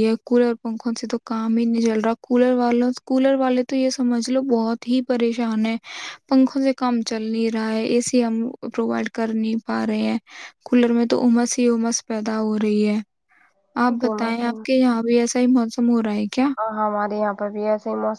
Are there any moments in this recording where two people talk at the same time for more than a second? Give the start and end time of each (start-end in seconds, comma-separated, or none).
none